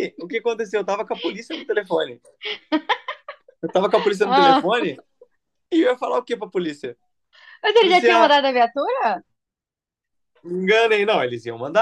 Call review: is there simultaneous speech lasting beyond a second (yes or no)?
no